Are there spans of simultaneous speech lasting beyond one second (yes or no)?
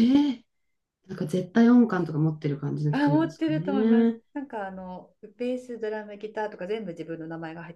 yes